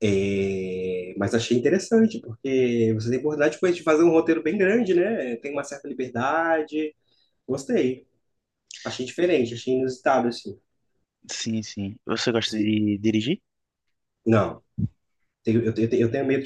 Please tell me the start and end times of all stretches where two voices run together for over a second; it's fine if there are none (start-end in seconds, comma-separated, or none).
none